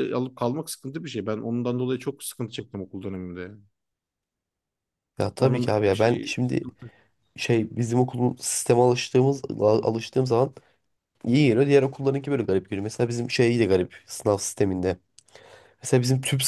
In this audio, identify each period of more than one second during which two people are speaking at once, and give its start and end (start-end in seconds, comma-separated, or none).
5.4-6.7